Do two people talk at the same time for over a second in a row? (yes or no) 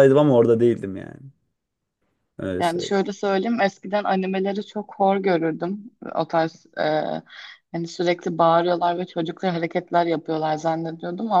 no